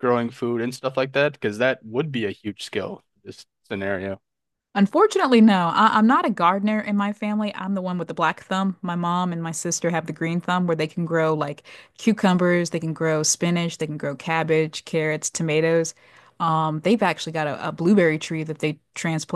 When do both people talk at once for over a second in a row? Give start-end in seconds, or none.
none